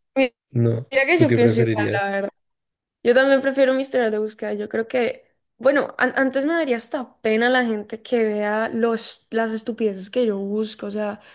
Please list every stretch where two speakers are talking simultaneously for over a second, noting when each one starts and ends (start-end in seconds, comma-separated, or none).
0.9-2.2